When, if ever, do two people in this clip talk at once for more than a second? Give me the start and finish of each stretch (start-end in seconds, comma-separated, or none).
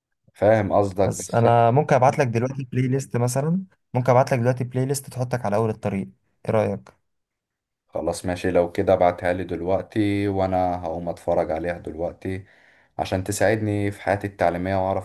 none